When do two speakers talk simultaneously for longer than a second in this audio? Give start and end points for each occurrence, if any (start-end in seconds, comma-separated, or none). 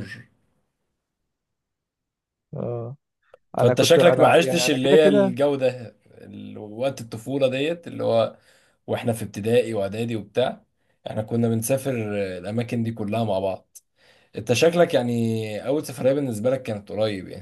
3.6-5.3